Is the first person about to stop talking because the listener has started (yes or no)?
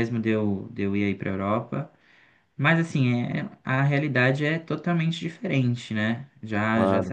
no